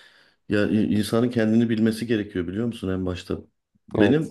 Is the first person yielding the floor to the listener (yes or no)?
no